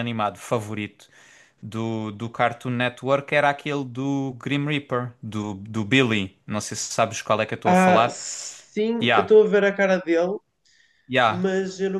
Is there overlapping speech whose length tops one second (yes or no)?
no